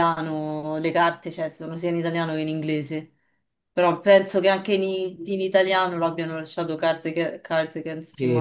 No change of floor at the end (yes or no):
no